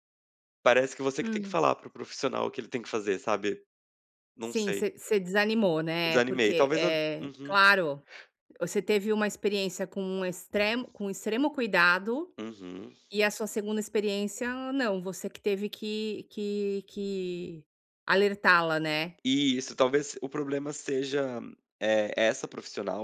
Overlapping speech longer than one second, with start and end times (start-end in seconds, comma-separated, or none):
6.0-7.6